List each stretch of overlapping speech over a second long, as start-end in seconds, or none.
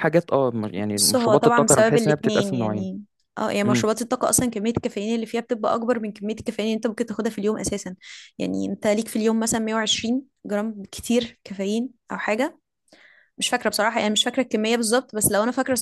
0.8-2.9